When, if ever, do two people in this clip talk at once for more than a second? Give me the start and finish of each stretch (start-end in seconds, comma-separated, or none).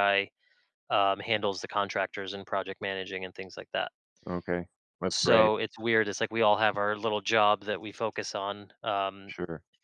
none